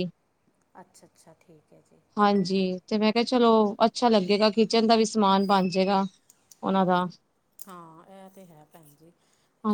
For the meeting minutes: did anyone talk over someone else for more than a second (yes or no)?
no